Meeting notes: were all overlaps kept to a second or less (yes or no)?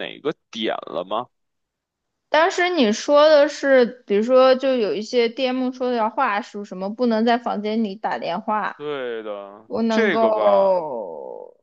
no